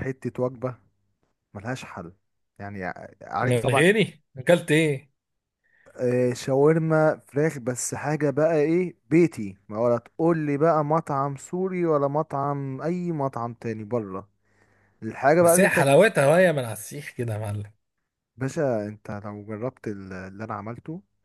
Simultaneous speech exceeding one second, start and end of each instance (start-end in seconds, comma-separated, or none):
none